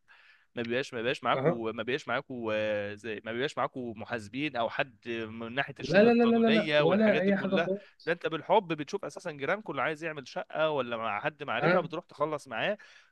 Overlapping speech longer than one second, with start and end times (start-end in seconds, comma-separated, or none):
5.8-7.7